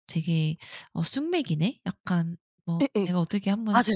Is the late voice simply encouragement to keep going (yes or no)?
no